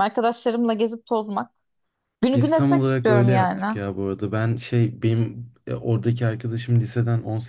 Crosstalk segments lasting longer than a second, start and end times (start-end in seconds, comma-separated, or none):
2.3-3.8